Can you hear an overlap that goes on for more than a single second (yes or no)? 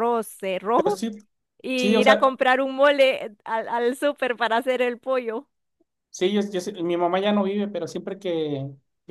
no